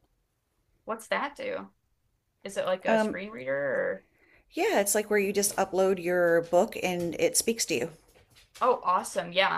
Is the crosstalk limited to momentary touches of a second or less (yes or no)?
yes